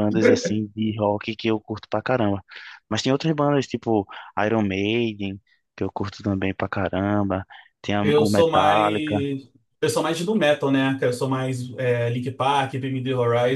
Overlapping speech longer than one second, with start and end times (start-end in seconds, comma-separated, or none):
8.0-9.3